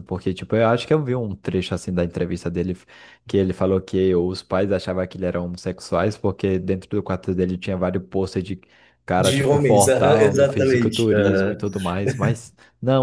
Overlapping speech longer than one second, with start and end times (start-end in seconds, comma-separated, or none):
9.2-11.1